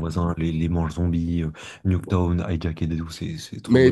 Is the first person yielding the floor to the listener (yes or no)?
yes